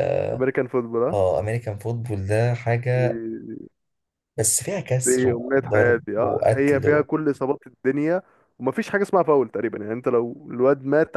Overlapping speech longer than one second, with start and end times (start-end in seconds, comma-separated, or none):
5.0-7.1